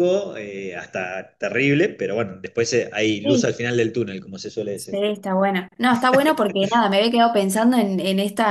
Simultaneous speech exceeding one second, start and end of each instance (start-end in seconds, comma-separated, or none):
none